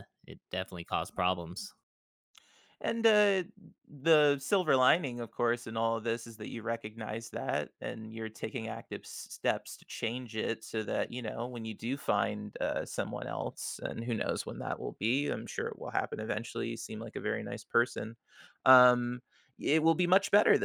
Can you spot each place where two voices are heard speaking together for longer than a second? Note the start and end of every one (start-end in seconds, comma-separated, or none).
none